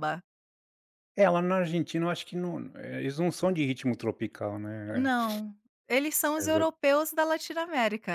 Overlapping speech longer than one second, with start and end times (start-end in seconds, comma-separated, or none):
none